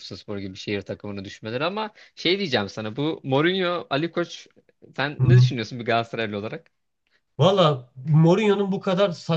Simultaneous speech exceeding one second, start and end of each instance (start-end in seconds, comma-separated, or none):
none